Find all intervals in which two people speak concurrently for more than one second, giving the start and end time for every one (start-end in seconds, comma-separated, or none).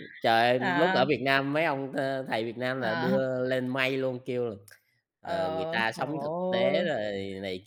5.2-7.0